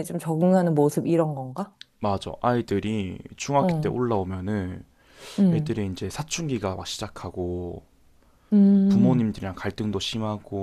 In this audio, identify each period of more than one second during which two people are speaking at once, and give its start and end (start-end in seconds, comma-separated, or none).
none